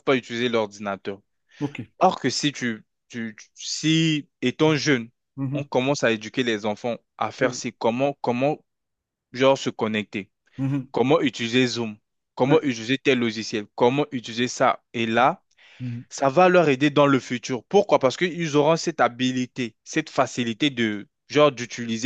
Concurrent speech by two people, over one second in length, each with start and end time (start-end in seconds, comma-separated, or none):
none